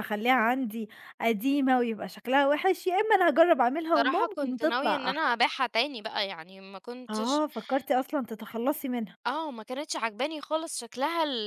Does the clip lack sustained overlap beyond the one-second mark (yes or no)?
no